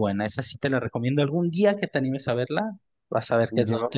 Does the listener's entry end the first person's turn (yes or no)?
yes